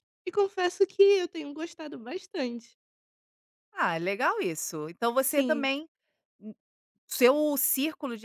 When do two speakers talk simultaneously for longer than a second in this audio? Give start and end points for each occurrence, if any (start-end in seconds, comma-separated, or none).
none